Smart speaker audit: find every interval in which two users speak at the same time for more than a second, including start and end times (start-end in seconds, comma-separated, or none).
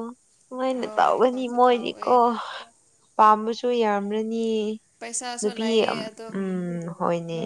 0.8-2.1